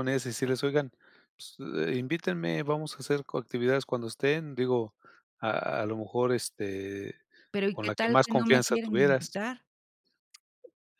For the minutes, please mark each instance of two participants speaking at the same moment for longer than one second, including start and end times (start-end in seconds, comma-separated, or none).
7.7-9.4